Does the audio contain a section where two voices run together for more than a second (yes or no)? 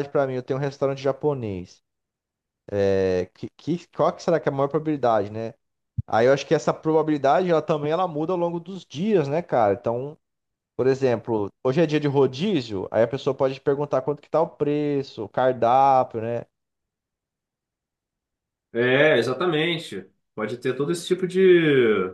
no